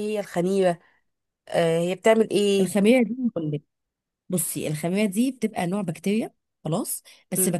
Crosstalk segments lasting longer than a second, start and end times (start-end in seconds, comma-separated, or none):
none